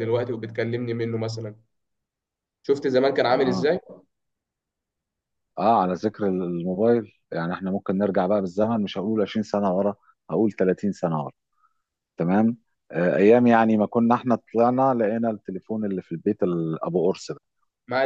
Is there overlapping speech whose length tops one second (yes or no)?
no